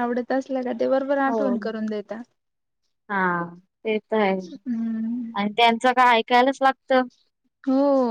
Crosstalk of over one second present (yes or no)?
no